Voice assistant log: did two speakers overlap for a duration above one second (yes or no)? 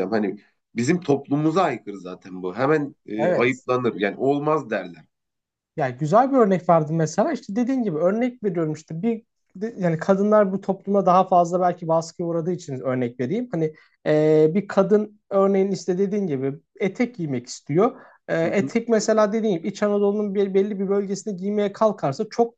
no